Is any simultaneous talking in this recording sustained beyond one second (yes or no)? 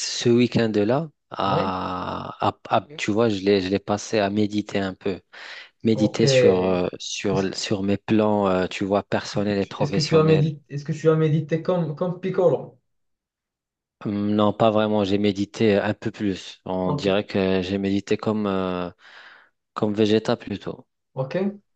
yes